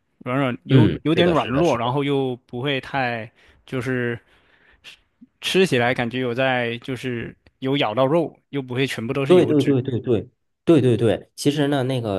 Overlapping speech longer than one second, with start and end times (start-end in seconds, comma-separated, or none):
0.7-2.0